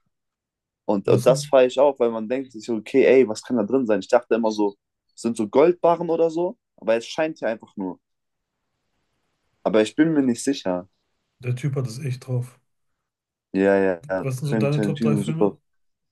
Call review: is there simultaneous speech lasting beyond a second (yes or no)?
yes